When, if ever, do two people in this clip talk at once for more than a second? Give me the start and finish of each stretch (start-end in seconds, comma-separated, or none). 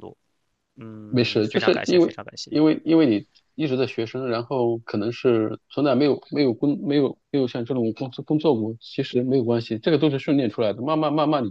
1.1-2.5